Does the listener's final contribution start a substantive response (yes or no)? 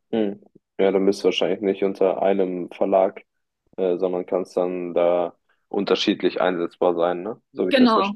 yes